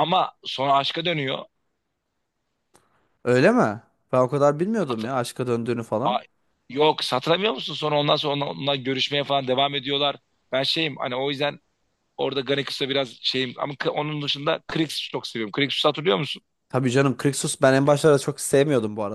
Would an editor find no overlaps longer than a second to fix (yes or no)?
yes